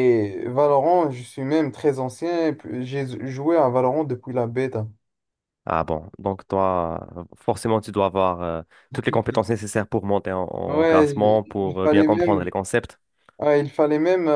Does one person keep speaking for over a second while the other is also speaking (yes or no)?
yes